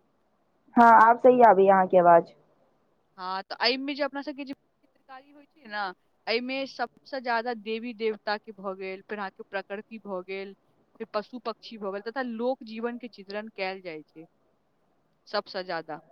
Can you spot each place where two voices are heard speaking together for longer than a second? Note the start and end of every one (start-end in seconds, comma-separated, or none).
none